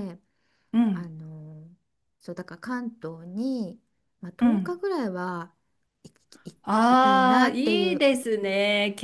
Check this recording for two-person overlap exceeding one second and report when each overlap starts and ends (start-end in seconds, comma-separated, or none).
6.6-8.1